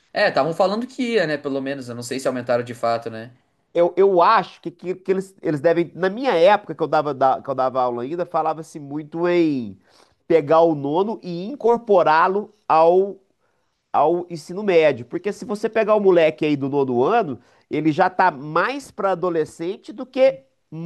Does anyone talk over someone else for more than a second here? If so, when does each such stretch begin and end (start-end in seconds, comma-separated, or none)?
none